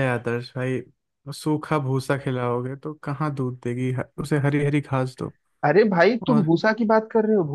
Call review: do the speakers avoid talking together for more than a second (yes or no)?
yes